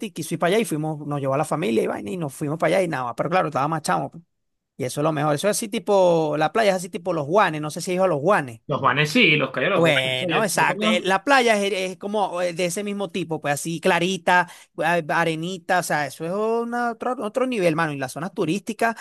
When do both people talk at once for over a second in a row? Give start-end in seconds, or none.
9.7-11.1